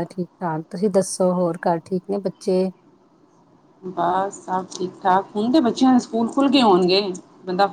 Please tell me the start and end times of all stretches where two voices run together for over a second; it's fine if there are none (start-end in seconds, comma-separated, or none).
none